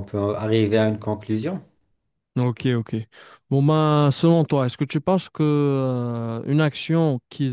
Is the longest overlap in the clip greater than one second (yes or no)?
no